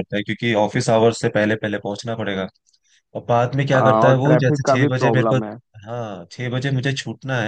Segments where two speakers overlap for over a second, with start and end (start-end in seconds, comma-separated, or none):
3.8-5.4